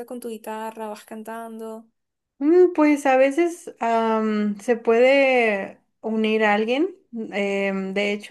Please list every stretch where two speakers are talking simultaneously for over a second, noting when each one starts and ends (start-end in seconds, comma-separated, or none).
none